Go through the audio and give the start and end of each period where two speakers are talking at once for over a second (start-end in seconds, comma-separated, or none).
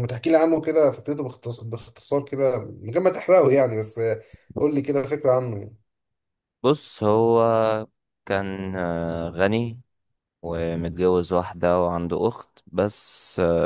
none